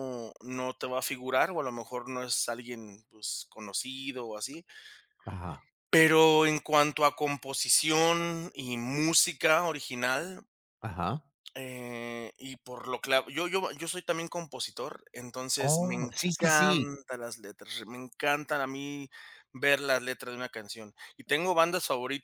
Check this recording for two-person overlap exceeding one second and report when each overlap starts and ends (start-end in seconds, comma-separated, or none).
15.6-16.9